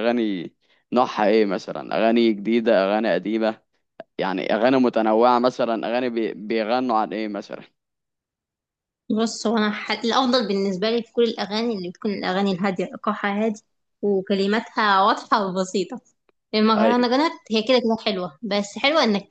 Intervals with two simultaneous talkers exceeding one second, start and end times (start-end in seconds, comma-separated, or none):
none